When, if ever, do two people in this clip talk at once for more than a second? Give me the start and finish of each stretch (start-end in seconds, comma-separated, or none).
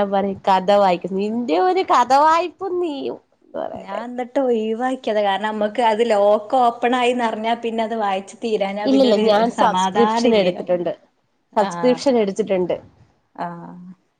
8.9-10.6